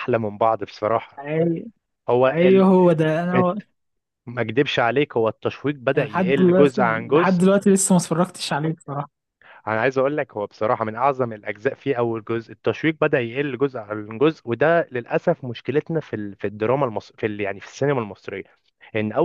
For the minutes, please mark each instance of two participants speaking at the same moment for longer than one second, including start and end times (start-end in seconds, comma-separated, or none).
5.9-7.4